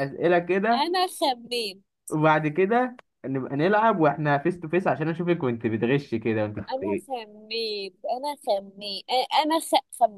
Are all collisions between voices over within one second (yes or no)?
yes